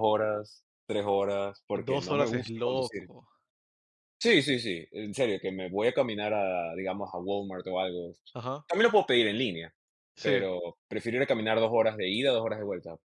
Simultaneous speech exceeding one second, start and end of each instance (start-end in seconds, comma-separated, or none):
1.8-3.1